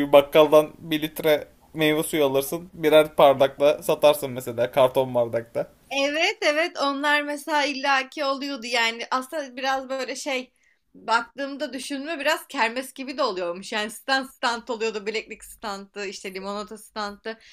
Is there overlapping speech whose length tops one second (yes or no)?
no